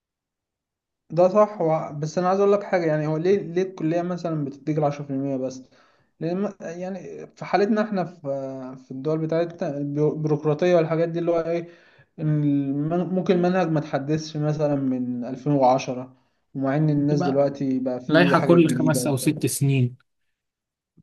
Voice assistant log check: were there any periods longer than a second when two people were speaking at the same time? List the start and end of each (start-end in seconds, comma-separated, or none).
18.1-19.3